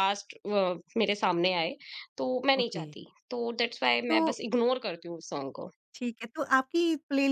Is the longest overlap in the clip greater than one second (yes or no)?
no